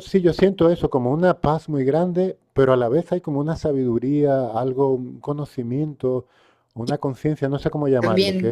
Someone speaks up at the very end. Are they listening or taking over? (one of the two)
taking over